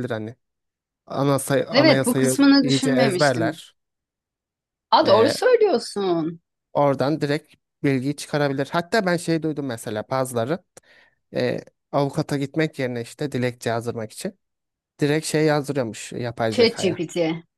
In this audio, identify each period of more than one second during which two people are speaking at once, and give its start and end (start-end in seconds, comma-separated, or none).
1.7-3.6